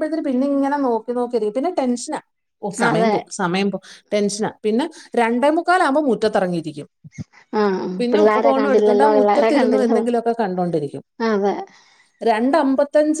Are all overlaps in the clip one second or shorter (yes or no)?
no